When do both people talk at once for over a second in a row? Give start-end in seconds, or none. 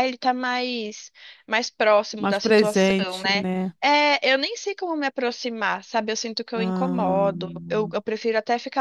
2.2-3.4, 6.5-8.0